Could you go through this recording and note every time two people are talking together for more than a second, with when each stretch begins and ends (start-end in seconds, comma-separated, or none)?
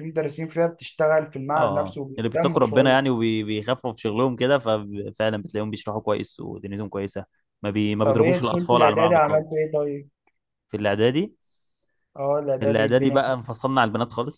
1.5-3.0, 8.0-9.4